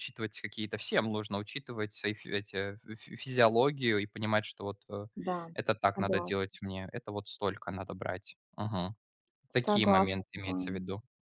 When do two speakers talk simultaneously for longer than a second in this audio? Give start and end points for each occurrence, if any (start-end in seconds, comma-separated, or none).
9.5-10.9